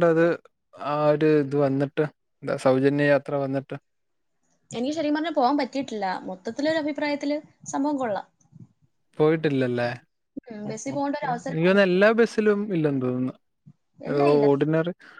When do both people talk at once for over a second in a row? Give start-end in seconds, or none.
10.7-12.0